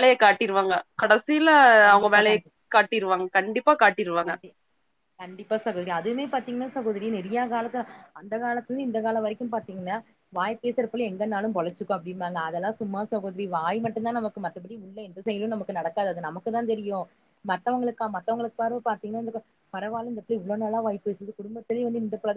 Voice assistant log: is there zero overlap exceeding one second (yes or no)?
yes